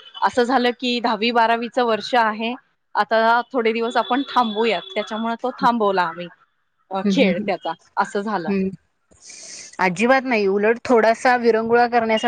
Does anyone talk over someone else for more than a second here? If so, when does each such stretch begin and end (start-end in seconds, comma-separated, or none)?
none